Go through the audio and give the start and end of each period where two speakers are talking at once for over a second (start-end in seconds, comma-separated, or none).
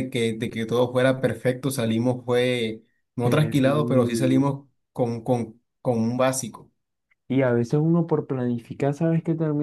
3.2-4.5